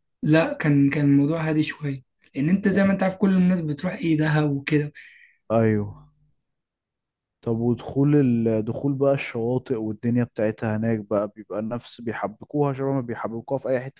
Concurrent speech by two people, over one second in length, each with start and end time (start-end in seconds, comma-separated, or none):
none